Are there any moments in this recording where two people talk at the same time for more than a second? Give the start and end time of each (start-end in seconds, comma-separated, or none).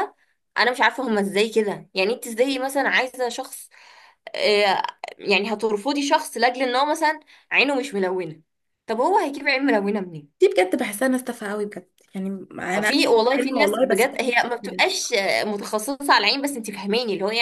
12.8-14.8